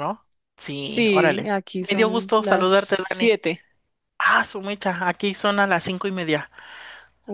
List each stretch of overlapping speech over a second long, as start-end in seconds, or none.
0.8-3.4